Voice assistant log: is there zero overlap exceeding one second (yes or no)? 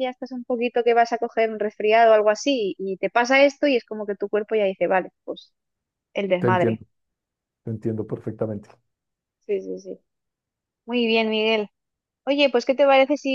yes